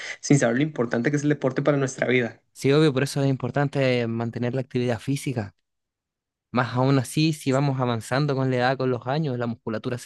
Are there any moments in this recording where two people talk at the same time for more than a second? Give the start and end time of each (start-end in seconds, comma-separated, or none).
none